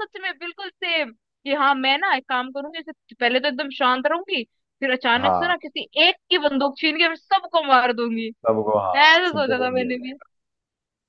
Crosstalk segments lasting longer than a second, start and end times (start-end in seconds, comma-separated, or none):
8.9-10.2